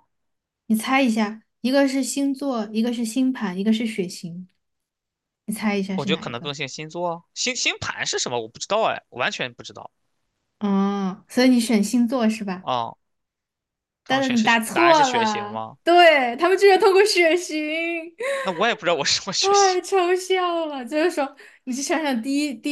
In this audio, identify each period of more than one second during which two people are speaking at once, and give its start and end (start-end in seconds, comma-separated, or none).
14.1-15.8